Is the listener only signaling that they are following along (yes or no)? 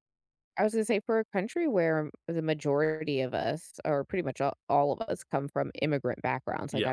yes